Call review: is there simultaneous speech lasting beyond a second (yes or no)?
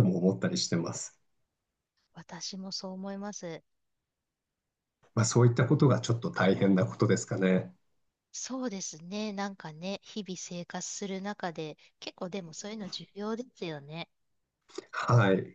no